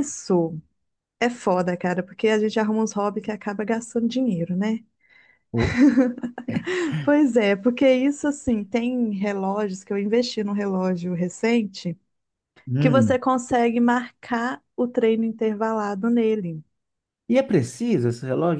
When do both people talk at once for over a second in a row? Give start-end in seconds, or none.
none